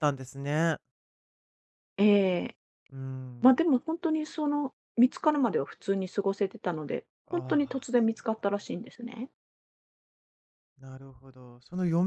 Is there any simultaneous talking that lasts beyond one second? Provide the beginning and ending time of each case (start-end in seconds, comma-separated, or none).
7.3-8.8